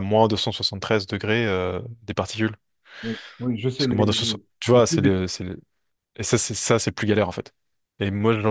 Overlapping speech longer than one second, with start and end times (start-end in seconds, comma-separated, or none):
3.8-5.2